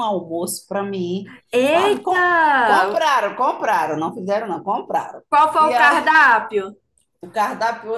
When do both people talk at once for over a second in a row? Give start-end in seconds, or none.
1.5-3.0